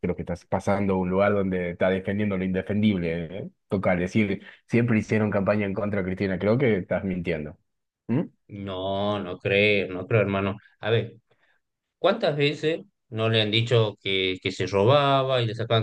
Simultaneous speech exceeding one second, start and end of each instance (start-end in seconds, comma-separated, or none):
none